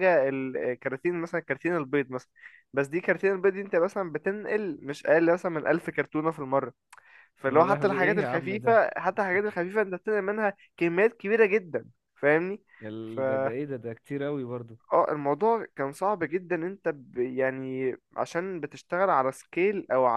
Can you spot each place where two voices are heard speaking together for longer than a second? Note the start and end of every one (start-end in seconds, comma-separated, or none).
7.5-8.8